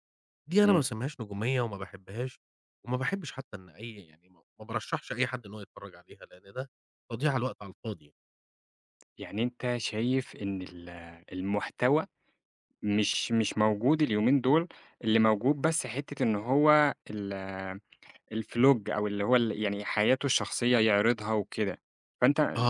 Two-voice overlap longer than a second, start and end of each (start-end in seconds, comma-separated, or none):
none